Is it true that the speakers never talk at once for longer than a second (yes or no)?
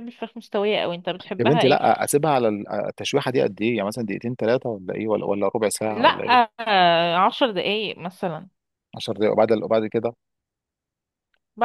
yes